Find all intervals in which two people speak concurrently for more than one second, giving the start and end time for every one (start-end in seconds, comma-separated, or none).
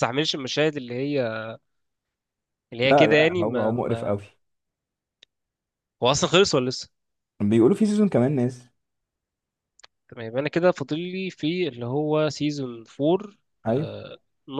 2.8-4.2